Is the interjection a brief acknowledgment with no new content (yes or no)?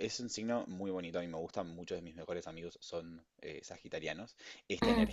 yes